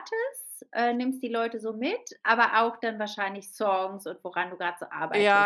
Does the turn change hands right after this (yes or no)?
yes